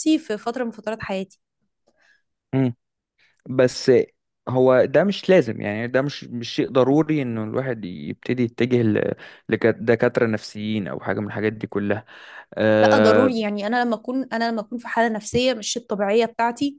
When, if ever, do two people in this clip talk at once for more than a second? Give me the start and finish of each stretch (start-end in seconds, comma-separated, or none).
none